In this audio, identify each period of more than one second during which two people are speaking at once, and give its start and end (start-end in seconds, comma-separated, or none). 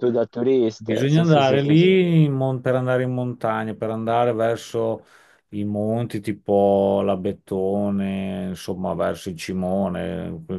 0.8-2.0